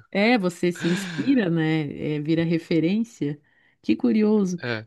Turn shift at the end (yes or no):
no